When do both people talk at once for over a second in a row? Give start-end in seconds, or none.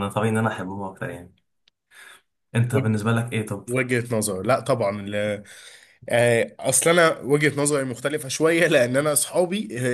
none